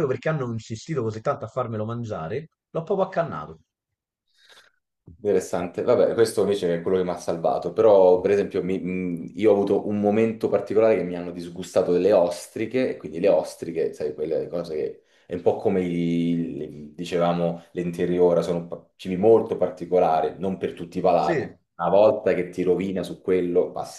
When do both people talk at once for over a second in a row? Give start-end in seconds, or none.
none